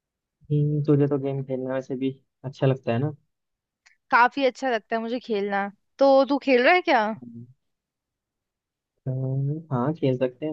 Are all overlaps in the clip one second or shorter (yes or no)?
yes